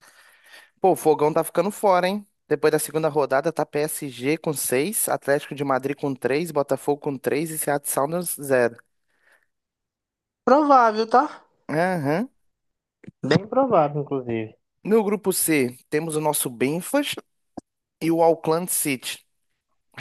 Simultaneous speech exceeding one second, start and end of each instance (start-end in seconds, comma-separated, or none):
none